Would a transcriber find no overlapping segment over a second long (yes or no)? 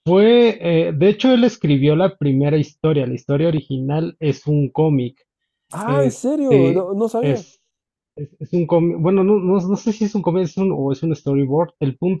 no